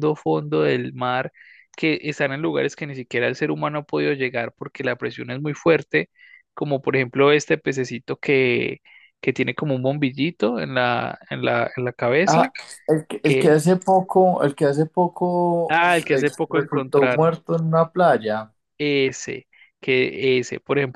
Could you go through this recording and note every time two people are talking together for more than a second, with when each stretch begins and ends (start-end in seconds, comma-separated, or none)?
15.7-17.3